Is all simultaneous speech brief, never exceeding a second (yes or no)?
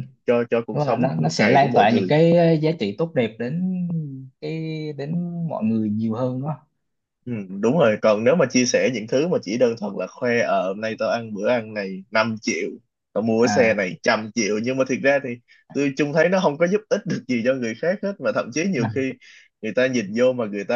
no